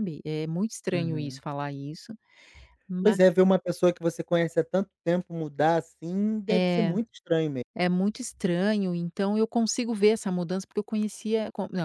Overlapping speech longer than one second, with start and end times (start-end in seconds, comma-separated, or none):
none